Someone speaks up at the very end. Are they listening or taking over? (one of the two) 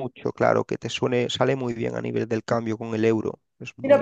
taking over